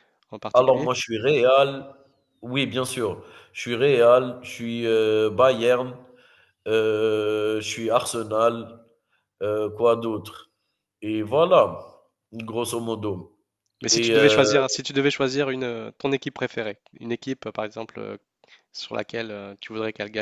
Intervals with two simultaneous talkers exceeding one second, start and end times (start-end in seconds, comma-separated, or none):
none